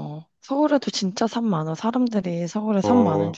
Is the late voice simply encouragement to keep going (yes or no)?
no